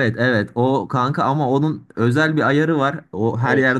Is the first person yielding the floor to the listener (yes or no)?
no